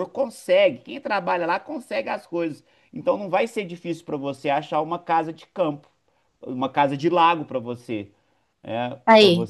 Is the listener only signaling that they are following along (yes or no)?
yes